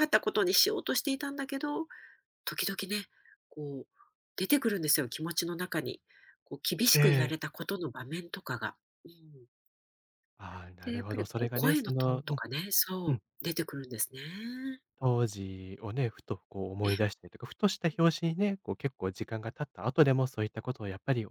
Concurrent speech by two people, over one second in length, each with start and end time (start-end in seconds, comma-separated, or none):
10.8-12.4